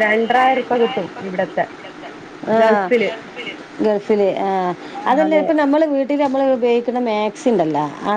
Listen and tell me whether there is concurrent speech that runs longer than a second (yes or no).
no